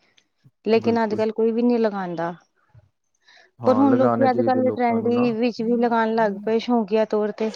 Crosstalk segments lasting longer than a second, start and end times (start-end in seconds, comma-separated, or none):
3.6-5.2